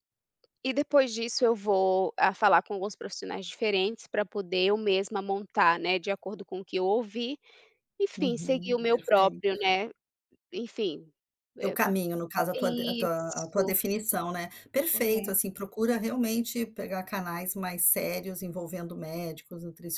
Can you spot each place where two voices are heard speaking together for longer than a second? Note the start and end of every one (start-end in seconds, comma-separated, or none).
8.2-9.4, 12.5-13.7